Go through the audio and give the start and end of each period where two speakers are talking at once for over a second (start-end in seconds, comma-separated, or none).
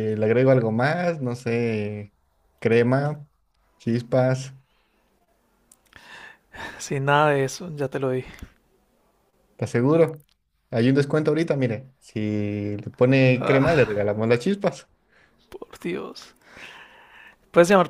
none